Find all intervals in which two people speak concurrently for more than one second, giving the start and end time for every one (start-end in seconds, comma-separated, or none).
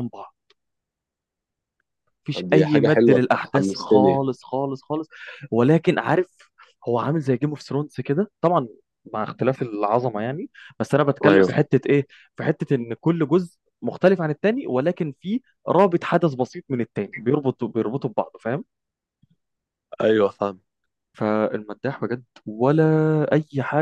2.3-4.2